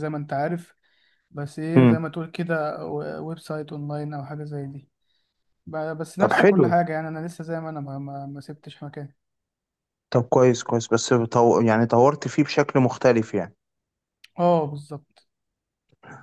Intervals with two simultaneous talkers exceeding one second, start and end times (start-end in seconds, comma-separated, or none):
none